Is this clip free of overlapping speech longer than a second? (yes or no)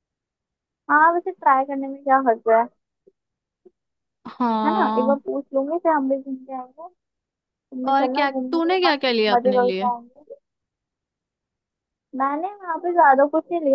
no